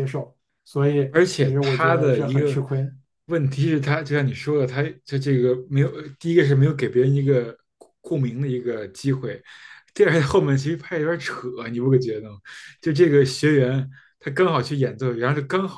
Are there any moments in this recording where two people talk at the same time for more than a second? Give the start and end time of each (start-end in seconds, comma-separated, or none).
1.1-2.6